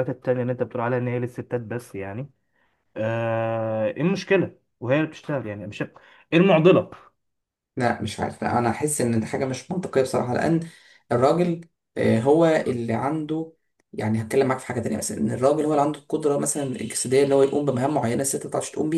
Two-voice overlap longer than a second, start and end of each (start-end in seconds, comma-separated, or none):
none